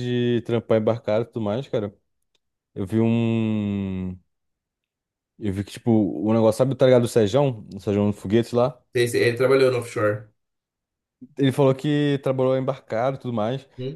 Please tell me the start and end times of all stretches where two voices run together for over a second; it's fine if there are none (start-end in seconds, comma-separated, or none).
none